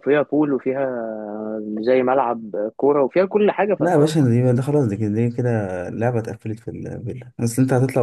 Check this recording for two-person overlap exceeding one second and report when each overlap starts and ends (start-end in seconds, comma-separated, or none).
none